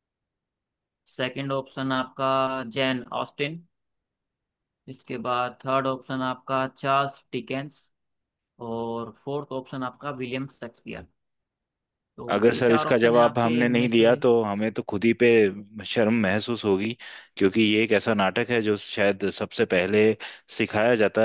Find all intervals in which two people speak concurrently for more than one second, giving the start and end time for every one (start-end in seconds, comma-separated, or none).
12.3-14.1